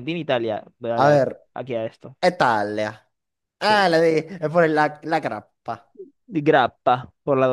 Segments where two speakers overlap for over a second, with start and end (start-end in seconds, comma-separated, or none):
none